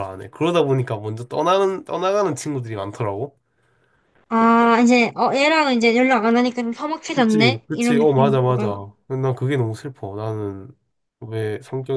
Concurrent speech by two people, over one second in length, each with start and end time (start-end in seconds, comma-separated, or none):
7.2-8.7